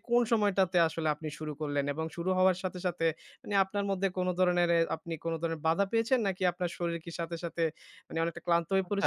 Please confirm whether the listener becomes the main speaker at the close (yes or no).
yes